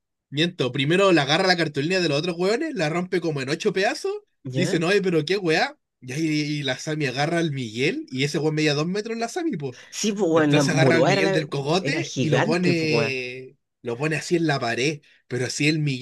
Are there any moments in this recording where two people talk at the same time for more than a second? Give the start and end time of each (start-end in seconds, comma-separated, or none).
10.3-13.2